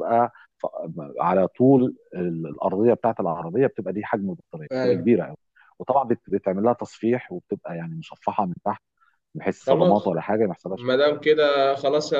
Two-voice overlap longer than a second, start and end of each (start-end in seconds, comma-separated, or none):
none